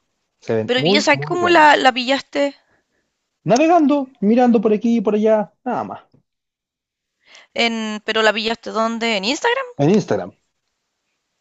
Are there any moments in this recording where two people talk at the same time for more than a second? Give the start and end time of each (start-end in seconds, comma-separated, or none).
0.7-1.9